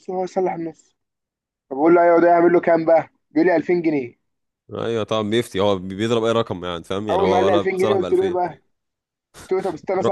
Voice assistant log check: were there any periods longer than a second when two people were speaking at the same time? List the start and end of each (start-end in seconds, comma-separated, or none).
7.1-8.4